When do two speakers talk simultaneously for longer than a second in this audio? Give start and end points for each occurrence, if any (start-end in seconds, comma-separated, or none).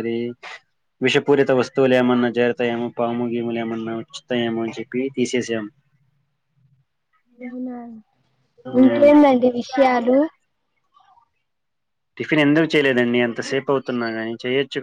8.8-10.1